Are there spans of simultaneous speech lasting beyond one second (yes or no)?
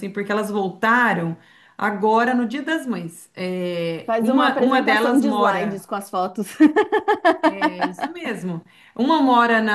yes